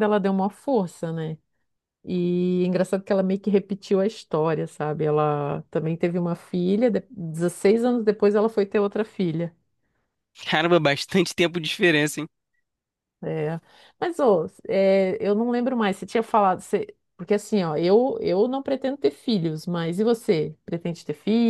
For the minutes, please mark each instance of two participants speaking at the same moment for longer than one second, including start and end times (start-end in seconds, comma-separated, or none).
none